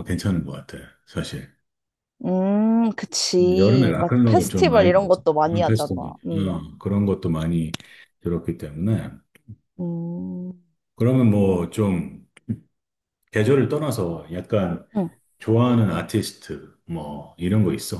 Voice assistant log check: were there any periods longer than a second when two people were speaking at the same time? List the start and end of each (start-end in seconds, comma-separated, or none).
3.6-6.6